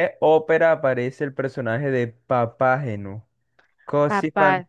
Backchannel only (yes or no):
yes